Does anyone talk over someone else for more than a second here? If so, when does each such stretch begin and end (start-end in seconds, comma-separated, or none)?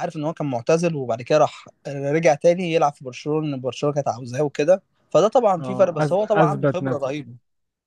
5.6-7.1